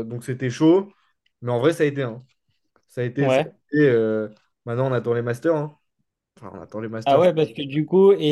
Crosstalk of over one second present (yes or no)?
no